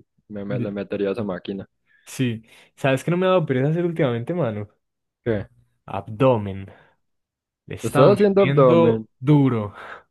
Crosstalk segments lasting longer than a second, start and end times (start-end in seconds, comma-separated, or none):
7.8-9.0